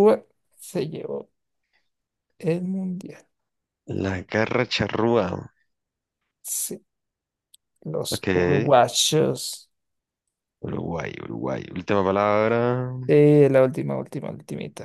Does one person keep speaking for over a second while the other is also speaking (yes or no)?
no